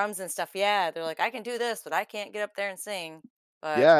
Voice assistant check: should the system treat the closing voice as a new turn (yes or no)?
yes